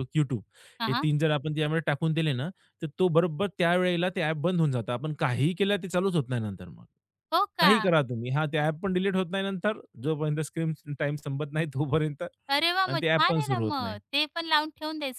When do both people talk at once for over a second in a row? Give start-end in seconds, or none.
12.5-14.0